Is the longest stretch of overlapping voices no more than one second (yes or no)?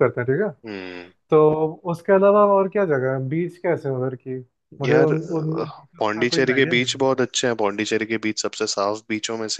no